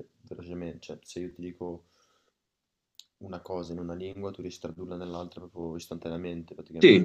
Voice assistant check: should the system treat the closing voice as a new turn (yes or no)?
yes